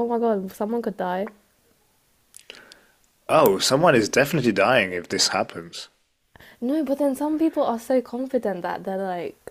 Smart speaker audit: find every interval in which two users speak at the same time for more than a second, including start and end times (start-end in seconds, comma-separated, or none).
none